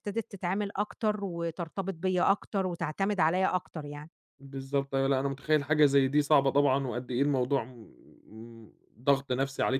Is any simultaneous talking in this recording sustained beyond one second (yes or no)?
no